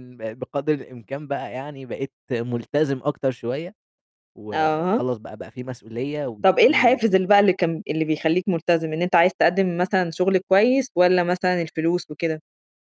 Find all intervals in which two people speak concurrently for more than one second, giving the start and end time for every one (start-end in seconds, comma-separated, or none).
none